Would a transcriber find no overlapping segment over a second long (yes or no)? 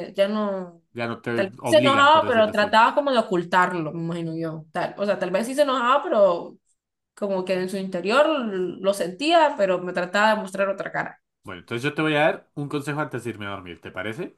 no